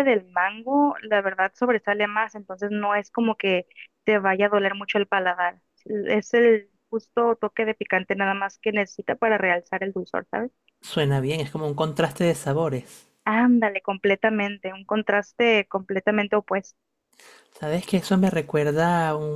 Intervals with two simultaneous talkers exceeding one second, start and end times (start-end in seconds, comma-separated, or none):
none